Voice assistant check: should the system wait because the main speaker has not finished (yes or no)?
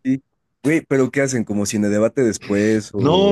no